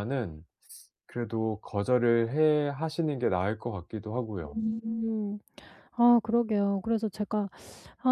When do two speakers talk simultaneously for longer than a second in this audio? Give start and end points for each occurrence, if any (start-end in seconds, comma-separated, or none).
none